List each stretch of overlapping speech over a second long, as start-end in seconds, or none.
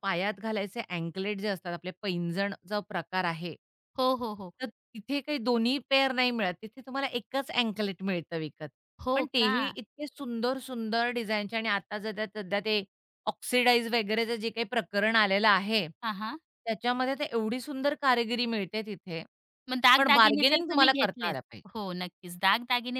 20.0-21.4